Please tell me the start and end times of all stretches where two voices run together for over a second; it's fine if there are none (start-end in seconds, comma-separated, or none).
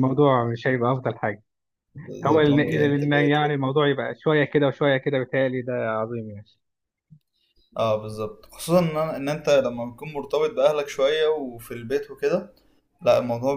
2.2-3.5